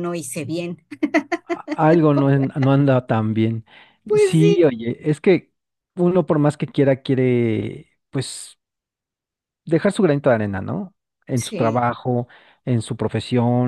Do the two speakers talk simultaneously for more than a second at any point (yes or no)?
no